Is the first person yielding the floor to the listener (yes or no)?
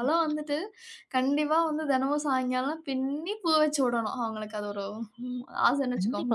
yes